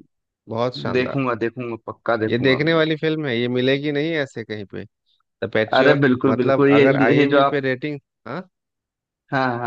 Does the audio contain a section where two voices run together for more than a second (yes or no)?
yes